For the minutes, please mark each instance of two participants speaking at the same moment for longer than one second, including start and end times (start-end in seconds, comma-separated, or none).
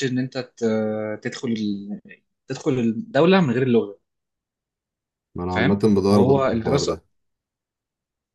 5.5-7.0